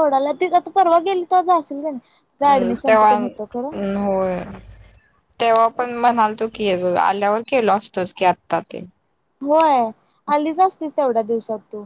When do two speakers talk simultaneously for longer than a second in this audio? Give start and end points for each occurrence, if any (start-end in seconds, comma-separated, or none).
2.3-3.7